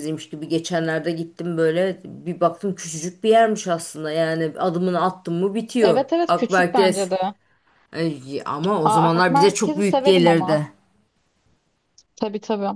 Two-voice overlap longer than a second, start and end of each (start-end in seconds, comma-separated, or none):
5.8-7.1, 8.8-10.6